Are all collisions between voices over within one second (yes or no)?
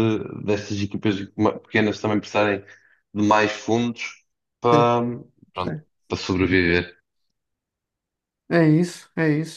yes